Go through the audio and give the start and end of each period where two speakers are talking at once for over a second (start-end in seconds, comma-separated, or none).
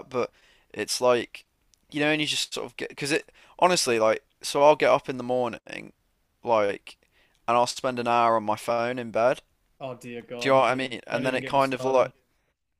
10.4-12.1